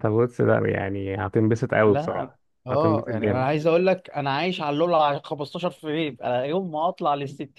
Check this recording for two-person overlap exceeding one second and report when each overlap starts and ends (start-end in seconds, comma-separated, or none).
1.9-3.5